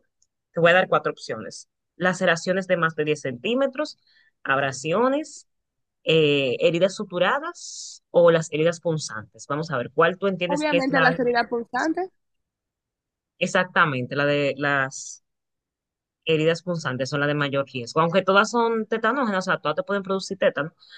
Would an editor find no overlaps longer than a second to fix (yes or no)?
no